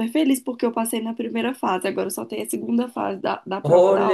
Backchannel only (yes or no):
no